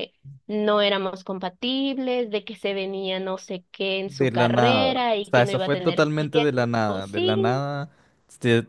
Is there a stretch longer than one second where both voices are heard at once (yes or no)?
yes